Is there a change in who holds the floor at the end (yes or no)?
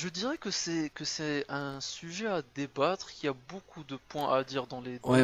yes